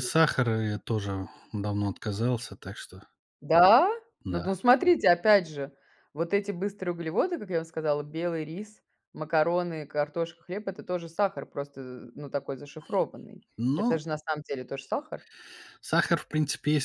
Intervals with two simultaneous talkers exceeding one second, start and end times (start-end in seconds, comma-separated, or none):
none